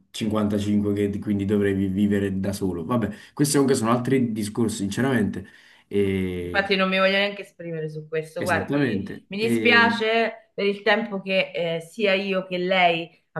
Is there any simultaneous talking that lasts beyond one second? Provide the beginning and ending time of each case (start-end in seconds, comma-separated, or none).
8.4-9.8